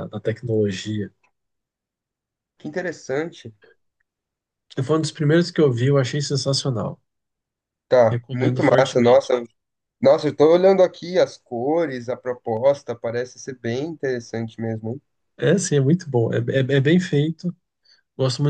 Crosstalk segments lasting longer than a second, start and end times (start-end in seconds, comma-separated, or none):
8.1-9.3